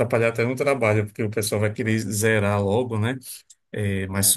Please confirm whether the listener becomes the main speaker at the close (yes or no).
no